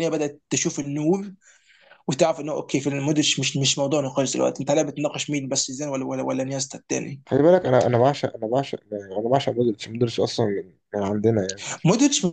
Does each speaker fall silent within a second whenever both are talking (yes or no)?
yes